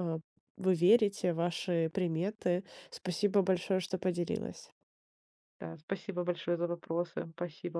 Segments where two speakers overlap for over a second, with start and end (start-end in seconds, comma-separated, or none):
none